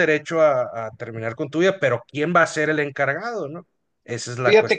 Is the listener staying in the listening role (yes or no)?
no